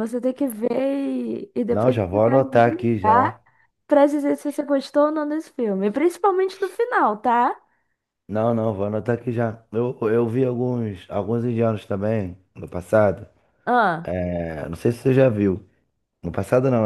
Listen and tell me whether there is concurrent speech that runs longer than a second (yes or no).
yes